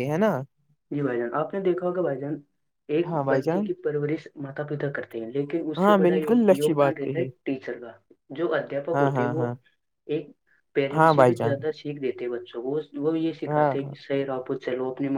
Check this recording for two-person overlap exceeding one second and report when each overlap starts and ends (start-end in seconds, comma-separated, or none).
5.8-7.3